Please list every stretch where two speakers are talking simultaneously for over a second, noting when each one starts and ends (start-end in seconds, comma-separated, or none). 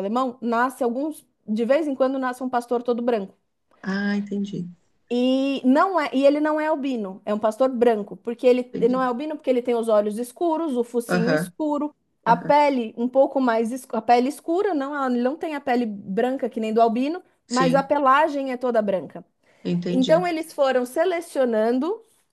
none